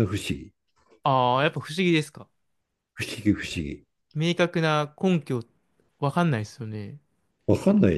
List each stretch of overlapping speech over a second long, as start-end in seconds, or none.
none